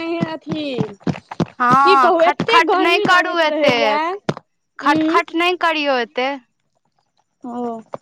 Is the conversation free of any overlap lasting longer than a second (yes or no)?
no